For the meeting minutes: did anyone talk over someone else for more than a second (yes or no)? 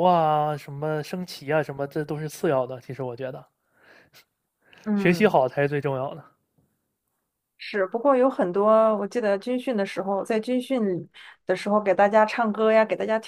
no